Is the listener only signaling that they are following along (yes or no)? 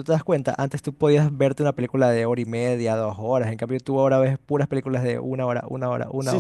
no